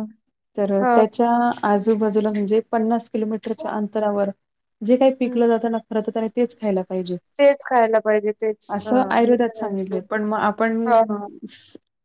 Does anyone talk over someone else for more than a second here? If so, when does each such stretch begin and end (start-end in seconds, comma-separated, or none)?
none